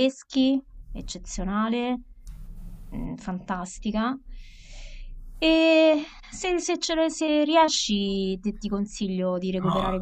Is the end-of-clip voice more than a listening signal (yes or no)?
yes